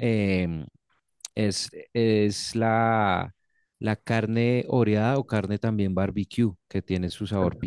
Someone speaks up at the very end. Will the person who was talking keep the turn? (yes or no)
yes